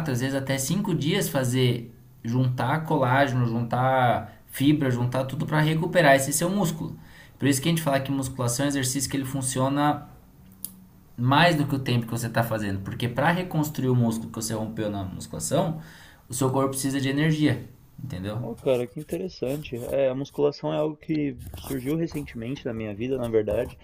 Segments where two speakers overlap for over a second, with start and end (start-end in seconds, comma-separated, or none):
none